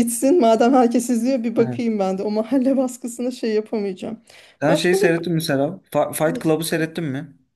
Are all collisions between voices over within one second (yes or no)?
yes